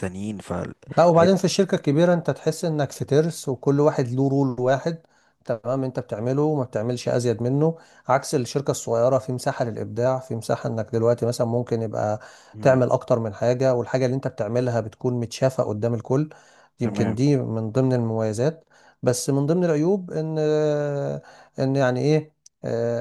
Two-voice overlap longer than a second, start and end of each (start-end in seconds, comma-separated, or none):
none